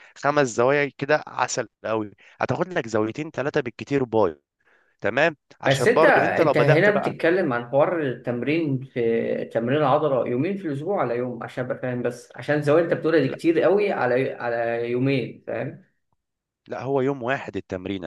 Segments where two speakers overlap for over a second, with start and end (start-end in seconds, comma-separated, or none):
5.7-7.2